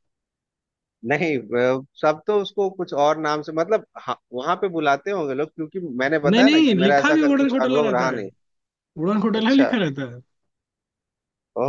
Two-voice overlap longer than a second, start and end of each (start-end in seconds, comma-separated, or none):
6.3-8.2